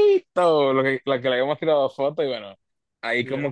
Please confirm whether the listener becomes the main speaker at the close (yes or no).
no